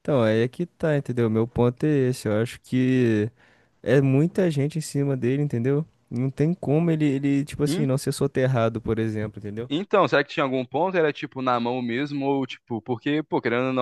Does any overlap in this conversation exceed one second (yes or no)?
no